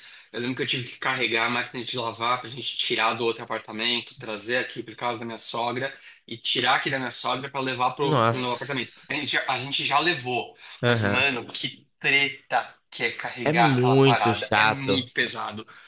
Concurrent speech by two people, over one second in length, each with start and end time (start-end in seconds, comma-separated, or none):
8.0-9.3, 13.4-15.1